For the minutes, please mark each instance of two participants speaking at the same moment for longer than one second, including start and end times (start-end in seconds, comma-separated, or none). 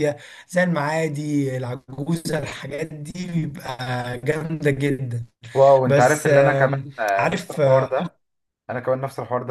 5.9-7.9